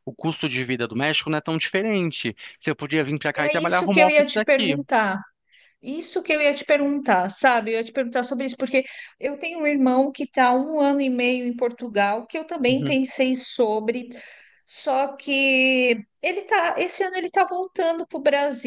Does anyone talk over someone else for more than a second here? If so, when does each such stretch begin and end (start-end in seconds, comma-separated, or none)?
3.4-4.8